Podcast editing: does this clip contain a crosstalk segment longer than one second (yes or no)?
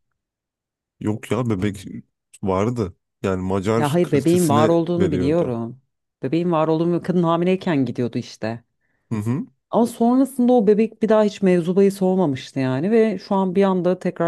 yes